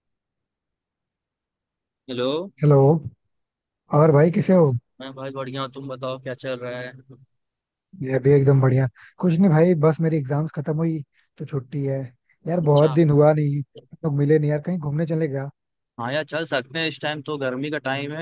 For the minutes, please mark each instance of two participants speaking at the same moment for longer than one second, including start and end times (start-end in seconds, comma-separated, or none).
none